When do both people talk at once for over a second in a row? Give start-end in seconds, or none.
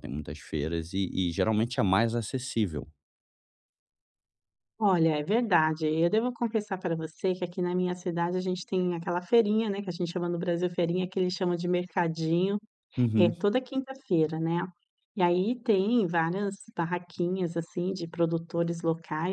none